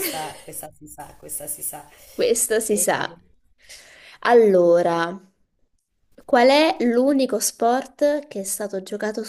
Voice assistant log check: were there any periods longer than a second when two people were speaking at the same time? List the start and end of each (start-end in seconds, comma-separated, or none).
none